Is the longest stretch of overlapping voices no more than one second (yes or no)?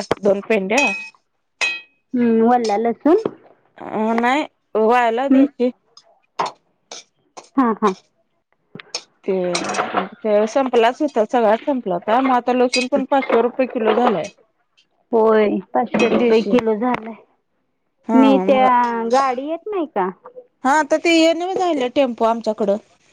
yes